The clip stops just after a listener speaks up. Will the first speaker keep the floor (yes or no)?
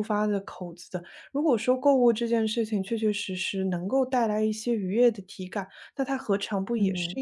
yes